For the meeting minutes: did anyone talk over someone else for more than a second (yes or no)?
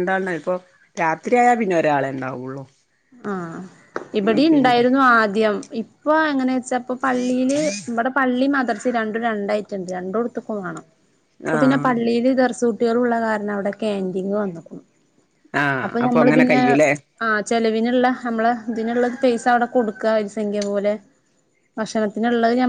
no